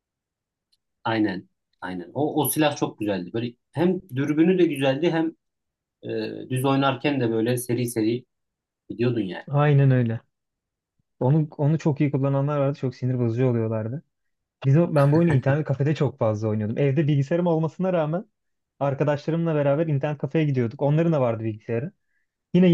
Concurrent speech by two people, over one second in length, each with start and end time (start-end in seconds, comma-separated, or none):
none